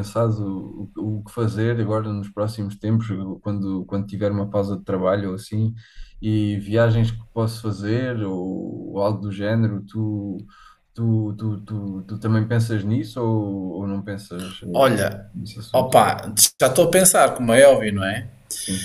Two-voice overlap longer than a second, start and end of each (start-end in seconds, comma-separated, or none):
none